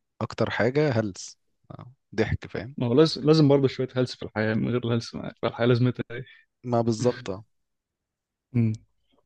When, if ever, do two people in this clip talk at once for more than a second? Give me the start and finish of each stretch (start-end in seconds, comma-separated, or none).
none